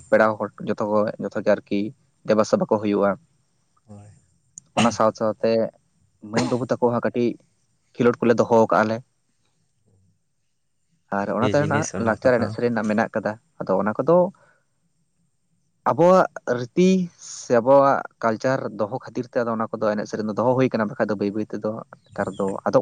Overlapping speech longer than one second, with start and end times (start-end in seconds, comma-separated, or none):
11.2-12.5